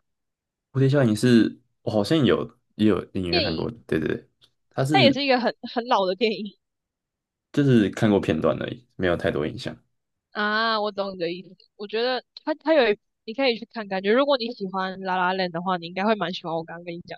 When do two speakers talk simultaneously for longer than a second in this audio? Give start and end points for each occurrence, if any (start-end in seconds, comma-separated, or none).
none